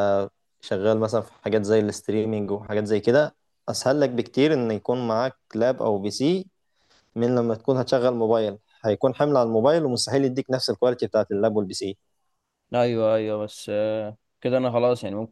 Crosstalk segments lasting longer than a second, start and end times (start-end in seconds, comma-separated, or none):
none